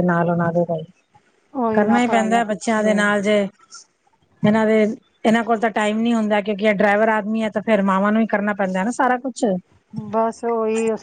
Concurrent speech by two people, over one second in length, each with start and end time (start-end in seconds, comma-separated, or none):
1.7-3.0